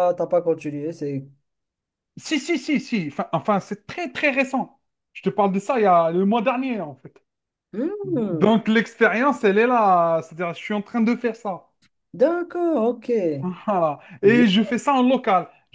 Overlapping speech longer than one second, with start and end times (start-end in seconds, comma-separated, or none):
none